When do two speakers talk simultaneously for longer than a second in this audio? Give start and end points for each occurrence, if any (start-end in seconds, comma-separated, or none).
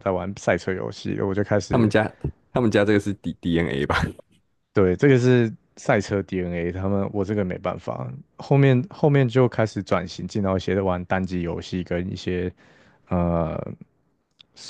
none